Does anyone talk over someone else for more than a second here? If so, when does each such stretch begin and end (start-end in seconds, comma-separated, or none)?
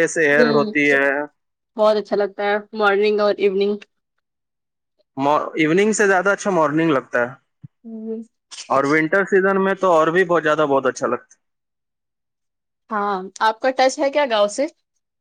none